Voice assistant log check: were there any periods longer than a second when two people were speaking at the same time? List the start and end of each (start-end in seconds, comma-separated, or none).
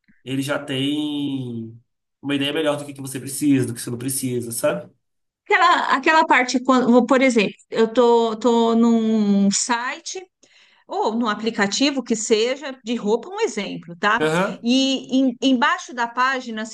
none